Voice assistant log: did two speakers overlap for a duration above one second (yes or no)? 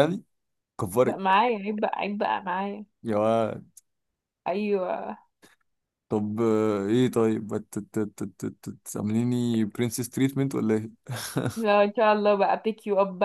no